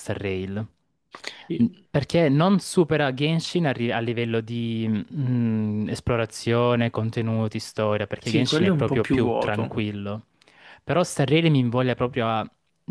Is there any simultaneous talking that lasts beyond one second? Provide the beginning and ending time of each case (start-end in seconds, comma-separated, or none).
8.2-9.8